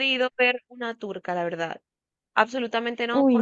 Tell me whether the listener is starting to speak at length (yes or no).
no